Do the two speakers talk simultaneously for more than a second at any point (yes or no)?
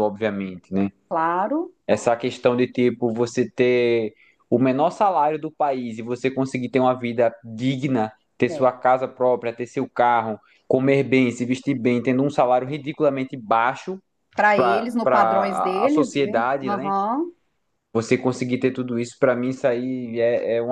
yes